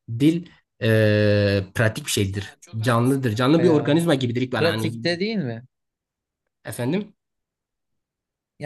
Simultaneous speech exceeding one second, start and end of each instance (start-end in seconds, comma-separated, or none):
2.3-3.9